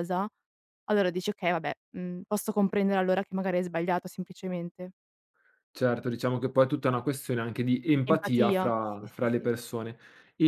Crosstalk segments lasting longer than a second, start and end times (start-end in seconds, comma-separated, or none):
8.1-9.5